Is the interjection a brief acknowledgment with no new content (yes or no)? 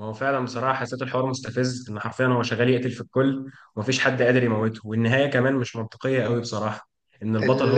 yes